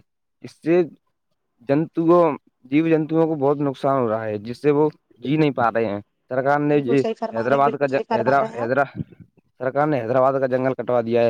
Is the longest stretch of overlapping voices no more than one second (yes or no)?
no